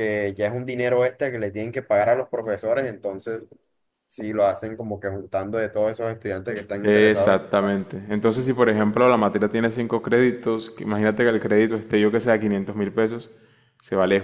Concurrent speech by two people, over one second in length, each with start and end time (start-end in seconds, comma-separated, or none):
none